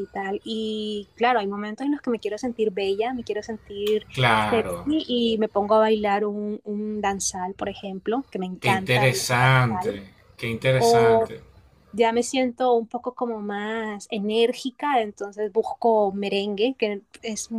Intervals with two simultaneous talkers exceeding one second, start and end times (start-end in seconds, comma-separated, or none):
8.6-10.0